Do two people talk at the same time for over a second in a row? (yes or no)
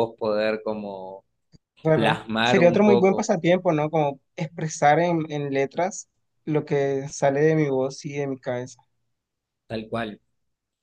yes